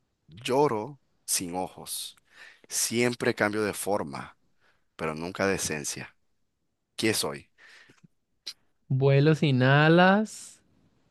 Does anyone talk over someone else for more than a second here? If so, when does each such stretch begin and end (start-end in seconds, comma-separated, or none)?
none